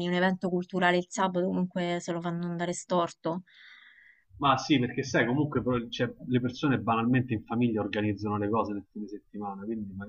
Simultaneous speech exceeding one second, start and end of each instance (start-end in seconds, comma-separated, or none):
none